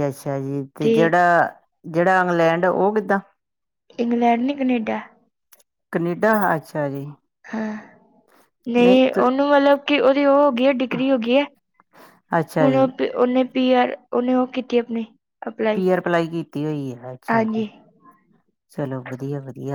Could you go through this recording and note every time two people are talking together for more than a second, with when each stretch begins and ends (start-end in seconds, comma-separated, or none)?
none